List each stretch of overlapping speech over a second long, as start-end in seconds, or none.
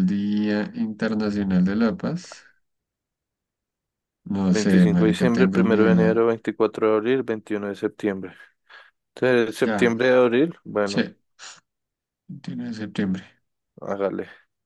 4.5-6.3